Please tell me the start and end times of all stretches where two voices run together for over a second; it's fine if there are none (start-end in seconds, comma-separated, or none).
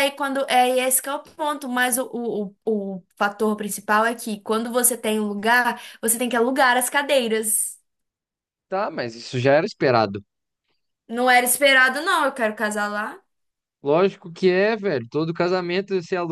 none